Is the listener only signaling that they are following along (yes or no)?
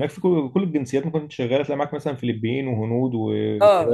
no